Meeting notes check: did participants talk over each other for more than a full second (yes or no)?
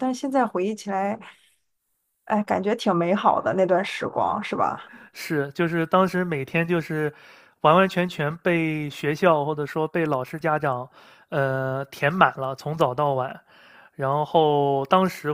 no